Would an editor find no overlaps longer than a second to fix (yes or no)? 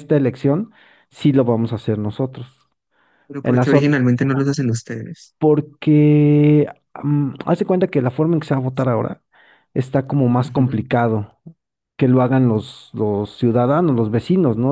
yes